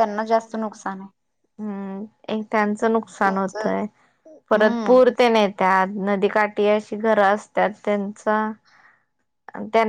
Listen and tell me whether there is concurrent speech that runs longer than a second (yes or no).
no